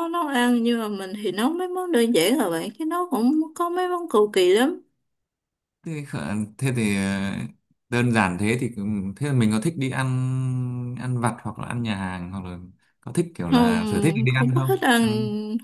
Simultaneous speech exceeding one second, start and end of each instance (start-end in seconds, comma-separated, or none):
13.5-15.0